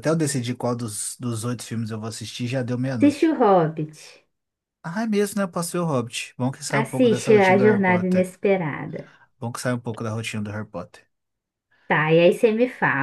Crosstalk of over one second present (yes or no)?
yes